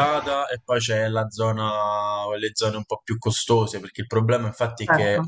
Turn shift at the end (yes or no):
no